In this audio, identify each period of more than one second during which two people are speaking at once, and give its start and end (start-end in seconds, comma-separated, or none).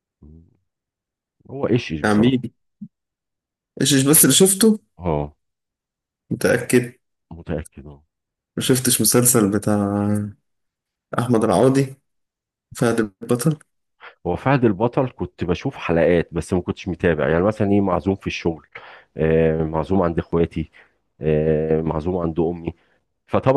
none